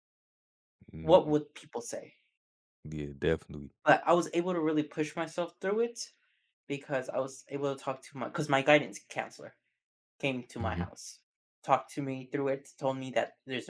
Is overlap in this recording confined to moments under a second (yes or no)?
yes